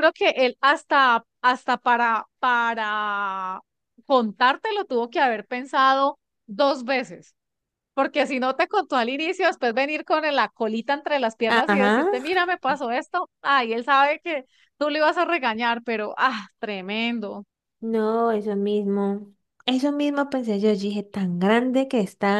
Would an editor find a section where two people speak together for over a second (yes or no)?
no